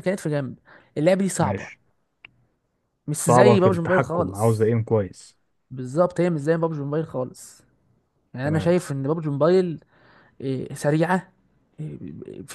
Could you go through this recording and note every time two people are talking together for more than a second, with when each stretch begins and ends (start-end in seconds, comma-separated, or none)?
3.1-4.7